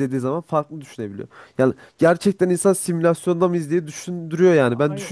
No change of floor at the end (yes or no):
no